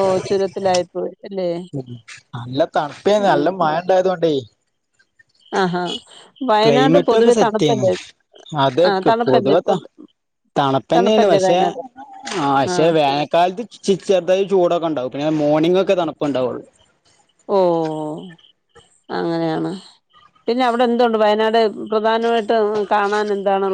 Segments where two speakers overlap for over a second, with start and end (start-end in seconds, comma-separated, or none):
none